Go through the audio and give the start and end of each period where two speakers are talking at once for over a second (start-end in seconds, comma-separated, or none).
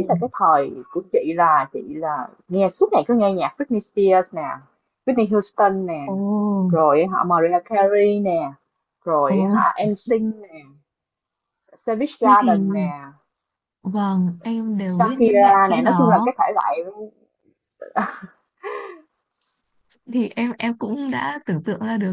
15.0-16.3